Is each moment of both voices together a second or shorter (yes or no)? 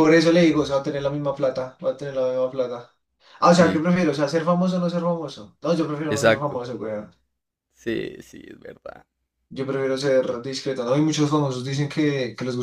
yes